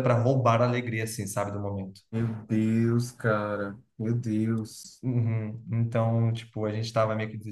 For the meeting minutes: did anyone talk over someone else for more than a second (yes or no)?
no